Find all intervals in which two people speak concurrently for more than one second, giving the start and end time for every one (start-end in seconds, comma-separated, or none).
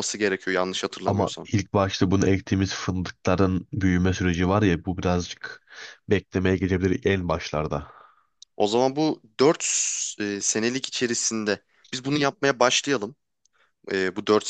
none